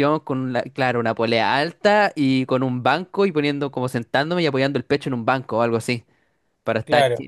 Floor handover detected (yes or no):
no